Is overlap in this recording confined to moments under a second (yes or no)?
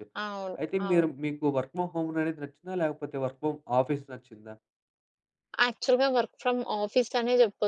yes